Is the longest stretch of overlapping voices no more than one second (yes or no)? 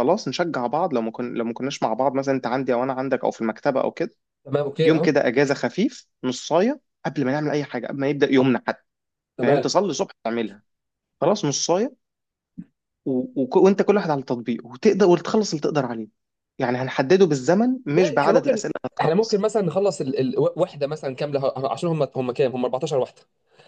no